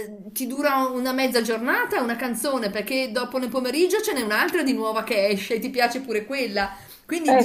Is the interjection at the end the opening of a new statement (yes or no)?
no